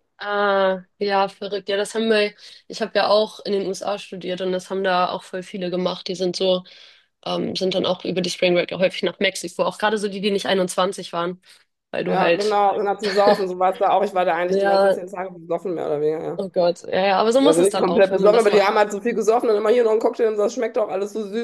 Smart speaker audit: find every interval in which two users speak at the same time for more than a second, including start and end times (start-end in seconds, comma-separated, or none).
17.4-18.7